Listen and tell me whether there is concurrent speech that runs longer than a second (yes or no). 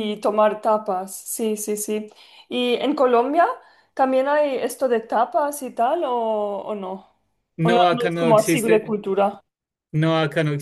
yes